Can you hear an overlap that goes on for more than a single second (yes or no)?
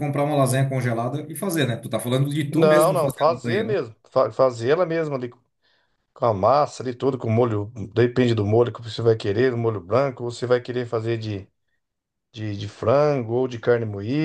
yes